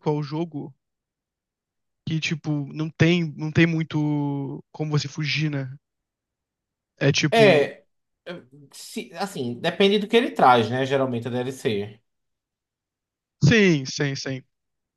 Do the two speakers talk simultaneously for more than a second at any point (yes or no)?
no